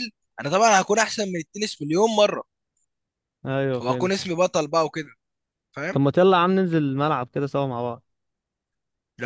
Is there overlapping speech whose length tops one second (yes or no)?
no